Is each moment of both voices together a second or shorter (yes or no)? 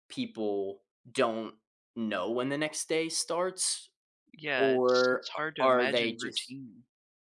no